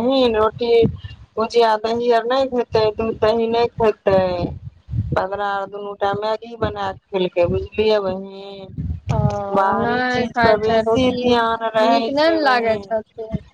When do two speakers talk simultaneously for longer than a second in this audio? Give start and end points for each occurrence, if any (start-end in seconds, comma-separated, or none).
9.8-12.1